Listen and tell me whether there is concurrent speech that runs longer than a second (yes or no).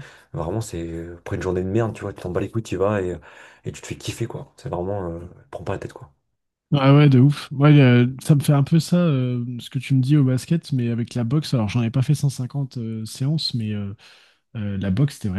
no